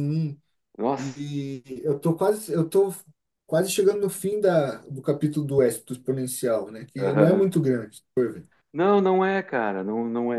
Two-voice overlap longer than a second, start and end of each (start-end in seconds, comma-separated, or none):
none